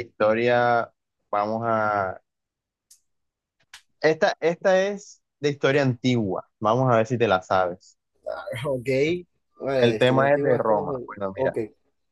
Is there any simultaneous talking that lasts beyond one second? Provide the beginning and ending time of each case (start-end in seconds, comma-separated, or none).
9.8-11.6